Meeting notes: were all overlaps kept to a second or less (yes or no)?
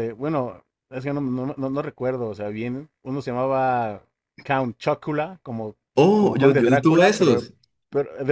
no